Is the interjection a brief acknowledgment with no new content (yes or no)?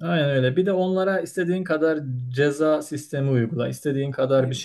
yes